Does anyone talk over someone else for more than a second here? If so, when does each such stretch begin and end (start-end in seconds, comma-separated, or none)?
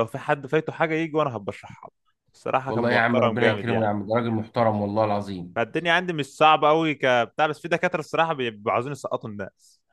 2.6-3.9